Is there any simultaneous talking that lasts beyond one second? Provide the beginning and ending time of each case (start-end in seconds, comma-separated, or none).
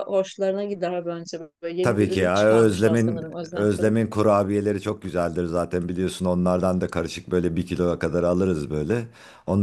1.8-4.0